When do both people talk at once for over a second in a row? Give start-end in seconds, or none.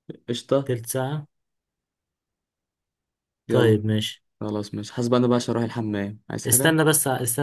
none